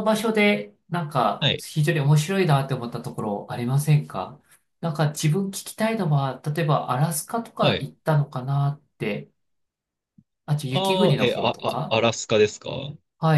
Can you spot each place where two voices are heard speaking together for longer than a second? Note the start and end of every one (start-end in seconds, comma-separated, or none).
10.7-12.0